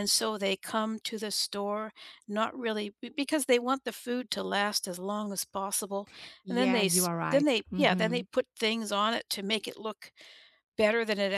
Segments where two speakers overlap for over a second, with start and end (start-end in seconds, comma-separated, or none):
6.5-8.2